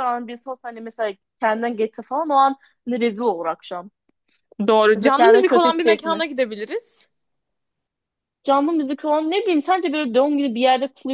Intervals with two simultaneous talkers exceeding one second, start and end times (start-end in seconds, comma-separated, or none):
4.9-6.2